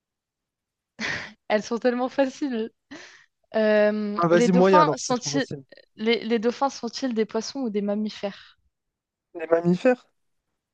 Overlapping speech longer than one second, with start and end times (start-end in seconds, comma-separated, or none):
4.2-5.5